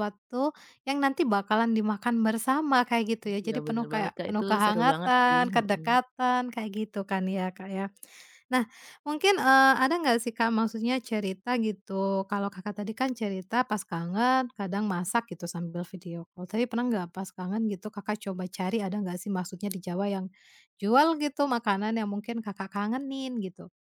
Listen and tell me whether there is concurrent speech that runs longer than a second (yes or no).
yes